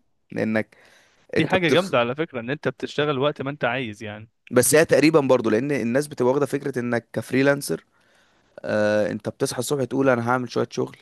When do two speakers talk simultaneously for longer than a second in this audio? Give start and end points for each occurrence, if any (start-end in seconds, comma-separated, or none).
none